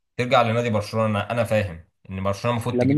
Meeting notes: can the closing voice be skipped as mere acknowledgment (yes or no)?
no